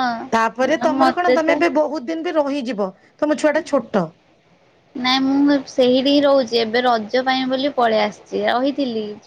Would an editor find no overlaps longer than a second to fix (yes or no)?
yes